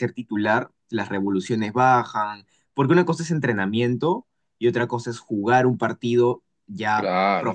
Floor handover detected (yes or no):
no